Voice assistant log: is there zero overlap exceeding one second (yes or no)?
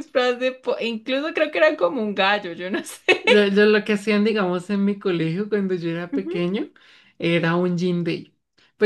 yes